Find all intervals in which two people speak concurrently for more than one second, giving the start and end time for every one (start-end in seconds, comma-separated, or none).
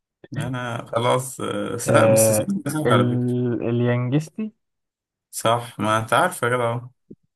1.9-3.5